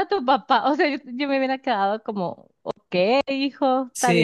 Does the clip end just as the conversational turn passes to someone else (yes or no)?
yes